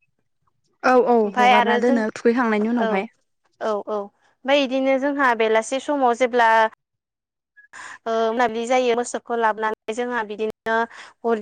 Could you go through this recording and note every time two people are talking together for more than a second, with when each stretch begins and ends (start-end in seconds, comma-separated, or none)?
1.2-3.0